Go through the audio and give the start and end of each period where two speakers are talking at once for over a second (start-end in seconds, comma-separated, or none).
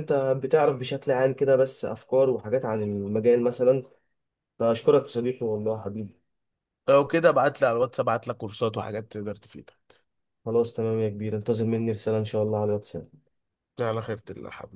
none